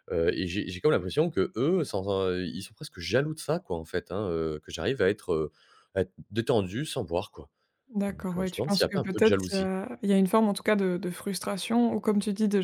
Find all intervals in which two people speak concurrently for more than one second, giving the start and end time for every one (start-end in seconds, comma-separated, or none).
8.1-9.7